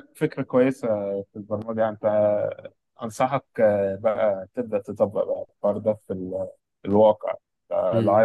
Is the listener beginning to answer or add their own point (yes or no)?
no